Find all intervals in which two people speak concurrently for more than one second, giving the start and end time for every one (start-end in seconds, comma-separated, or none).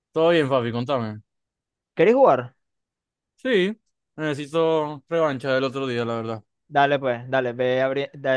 none